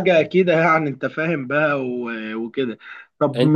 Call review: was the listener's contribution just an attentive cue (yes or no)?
yes